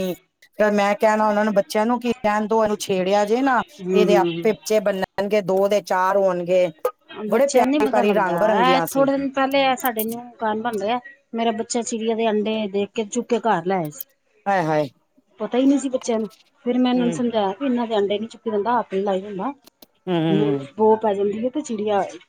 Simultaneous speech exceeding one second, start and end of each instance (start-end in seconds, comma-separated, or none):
7.3-9.1